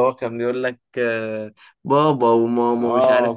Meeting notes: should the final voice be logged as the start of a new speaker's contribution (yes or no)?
yes